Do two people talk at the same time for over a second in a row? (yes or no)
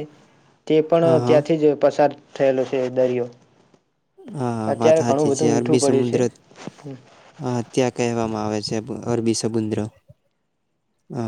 yes